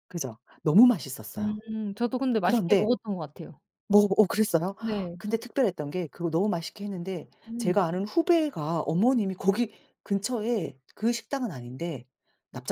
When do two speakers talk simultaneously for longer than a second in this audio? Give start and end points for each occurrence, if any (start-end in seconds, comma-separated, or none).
none